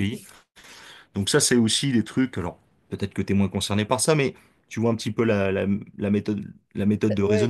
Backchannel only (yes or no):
no